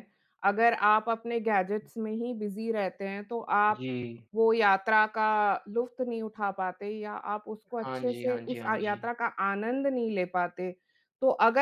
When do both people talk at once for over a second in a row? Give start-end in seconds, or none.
7.7-9.1